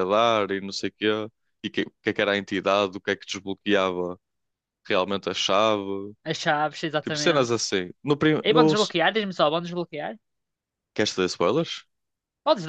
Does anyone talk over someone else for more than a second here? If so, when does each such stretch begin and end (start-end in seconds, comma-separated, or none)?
none